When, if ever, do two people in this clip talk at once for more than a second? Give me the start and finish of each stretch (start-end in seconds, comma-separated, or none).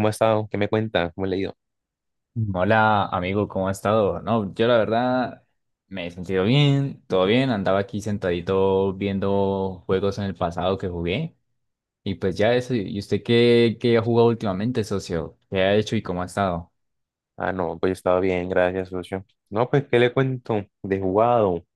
none